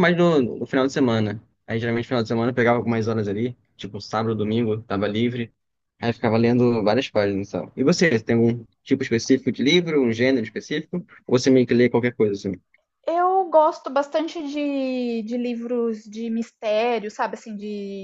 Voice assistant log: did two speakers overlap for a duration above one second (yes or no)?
no